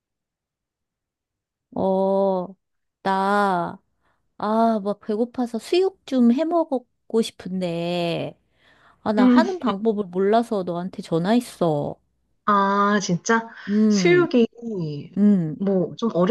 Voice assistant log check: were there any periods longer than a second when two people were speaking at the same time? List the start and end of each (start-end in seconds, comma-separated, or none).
none